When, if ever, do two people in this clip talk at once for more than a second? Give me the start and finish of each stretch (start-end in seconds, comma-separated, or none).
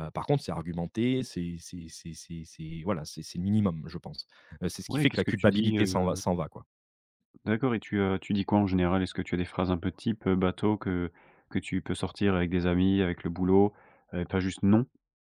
4.9-6.2